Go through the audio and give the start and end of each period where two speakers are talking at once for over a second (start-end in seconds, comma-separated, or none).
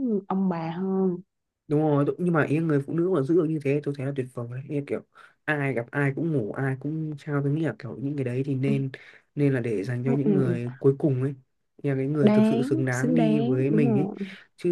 12.2-14.1